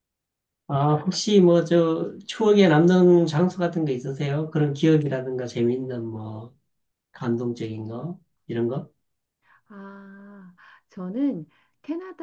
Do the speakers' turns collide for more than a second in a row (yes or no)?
no